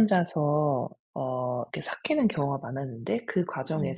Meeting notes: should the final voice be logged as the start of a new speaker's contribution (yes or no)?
no